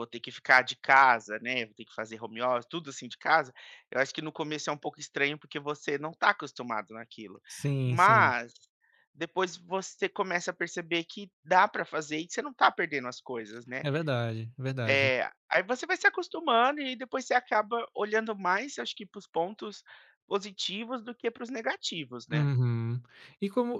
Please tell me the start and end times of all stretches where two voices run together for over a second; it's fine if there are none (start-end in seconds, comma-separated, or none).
none